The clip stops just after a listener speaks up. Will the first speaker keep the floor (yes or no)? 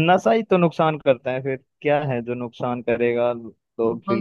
no